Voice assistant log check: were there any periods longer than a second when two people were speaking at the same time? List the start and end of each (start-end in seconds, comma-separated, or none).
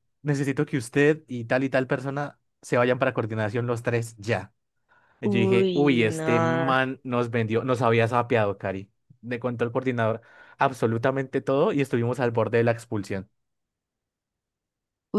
5.2-6.7